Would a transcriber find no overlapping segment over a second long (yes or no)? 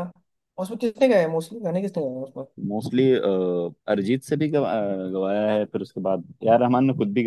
yes